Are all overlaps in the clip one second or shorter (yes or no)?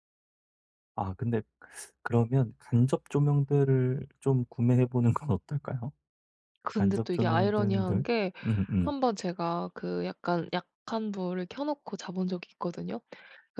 no